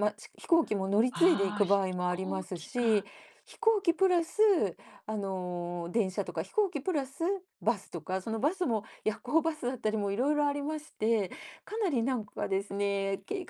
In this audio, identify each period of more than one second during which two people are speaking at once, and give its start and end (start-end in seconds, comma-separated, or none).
1.1-3.0